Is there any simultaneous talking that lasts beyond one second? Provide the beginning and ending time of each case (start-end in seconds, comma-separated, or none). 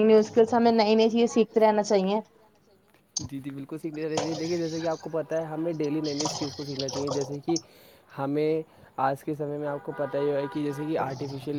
none